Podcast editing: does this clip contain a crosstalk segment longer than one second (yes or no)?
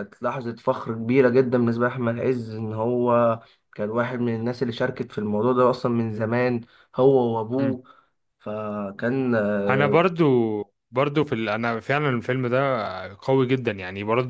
no